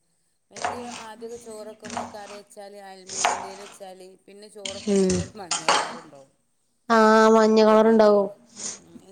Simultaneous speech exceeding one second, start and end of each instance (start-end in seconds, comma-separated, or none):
none